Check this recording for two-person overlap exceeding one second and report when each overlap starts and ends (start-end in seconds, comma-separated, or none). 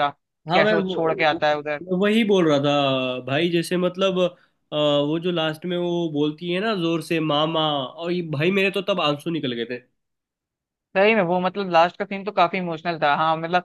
0.5-1.8